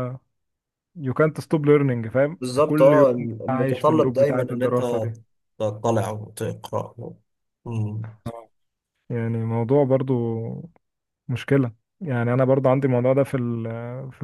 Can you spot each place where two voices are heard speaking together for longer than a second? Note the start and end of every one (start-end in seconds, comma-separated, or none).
2.4-4.8